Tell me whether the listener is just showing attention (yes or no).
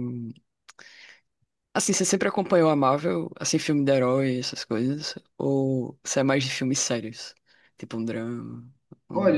no